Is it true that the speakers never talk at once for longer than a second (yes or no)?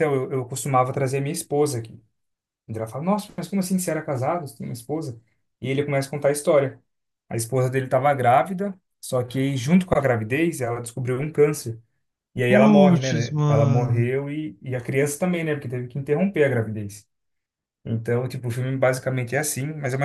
no